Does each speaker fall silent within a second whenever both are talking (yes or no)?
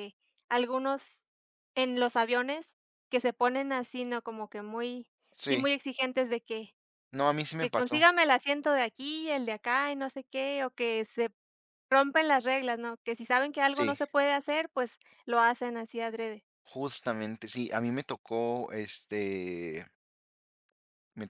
yes